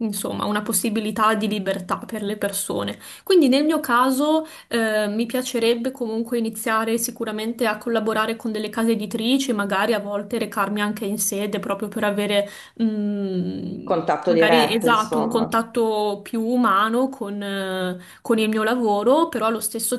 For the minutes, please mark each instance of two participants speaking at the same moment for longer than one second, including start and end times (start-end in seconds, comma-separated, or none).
13.8-15.6